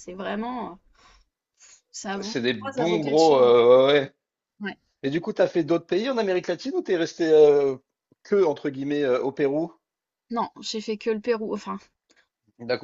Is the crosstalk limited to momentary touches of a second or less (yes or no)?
no